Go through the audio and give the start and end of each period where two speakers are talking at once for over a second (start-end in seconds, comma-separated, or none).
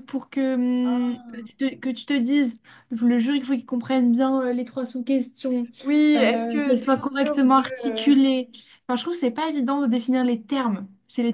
6.2-8.1